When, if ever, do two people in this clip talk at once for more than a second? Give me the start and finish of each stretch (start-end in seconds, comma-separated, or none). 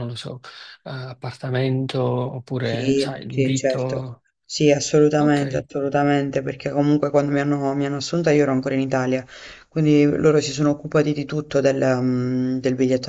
2.6-4.2